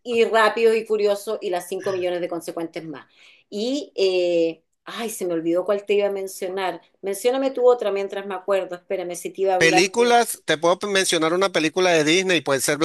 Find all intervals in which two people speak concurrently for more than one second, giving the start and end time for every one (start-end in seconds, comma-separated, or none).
none